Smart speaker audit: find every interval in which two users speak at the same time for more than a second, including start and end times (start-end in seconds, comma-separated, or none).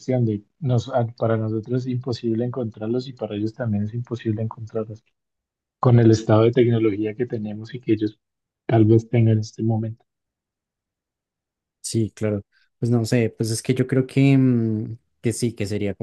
none